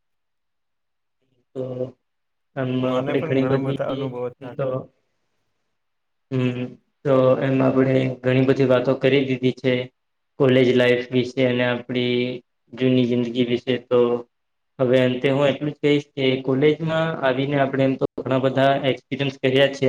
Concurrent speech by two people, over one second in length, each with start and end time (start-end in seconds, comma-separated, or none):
2.9-4.7